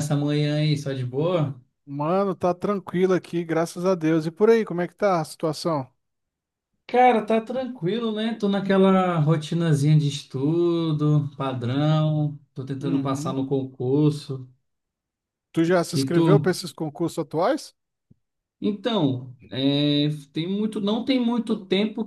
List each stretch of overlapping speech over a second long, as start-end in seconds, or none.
none